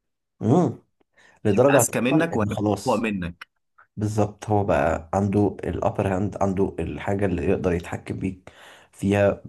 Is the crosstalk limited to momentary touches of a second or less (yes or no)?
no